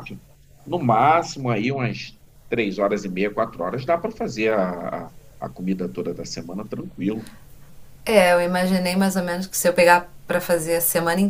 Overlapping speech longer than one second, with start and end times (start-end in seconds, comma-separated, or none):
none